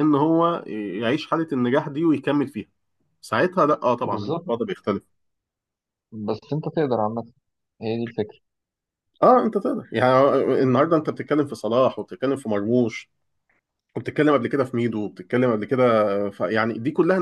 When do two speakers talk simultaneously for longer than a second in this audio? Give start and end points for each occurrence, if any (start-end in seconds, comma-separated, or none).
none